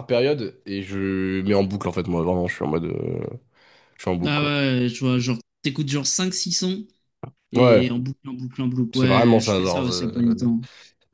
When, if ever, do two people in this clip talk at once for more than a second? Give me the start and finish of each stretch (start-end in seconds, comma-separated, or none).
8.9-10.4